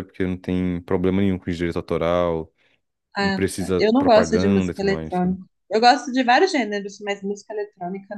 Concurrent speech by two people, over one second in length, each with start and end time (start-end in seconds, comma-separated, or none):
3.2-5.3